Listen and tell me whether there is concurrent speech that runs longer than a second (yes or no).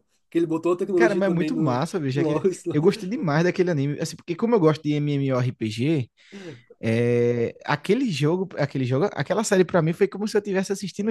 yes